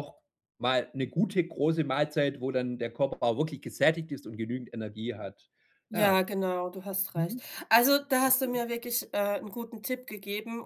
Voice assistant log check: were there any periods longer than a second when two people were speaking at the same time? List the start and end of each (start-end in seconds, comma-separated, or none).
none